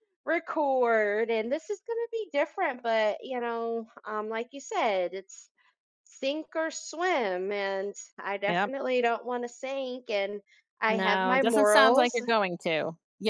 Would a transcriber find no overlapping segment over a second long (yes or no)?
no